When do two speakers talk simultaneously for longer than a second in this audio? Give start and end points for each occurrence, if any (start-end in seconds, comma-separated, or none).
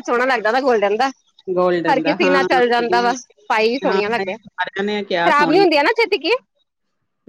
3.8-5.3